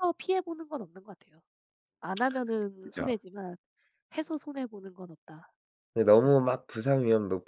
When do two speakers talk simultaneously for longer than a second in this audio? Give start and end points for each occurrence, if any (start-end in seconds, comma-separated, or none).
none